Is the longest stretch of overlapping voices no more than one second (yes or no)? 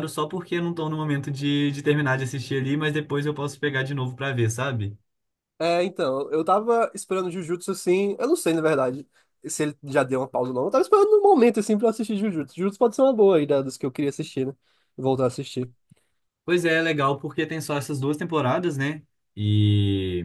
yes